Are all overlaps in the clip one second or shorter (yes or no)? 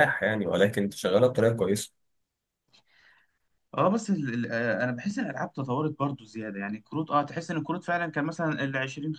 yes